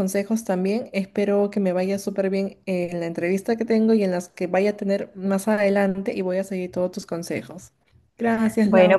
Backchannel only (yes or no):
no